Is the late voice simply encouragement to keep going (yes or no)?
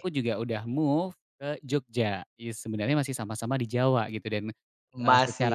yes